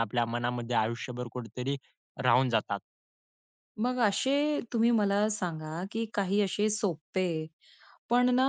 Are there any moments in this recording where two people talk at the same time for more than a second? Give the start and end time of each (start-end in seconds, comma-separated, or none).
none